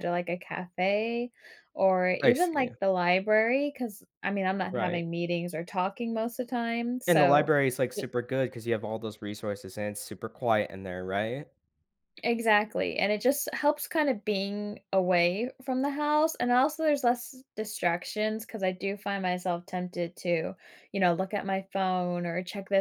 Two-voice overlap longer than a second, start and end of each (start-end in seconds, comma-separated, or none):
none